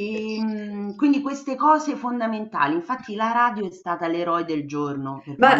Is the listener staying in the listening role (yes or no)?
no